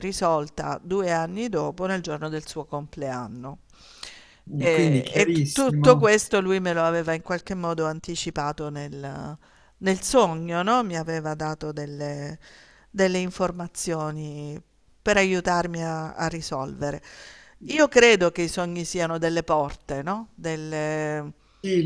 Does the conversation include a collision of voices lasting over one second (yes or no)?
yes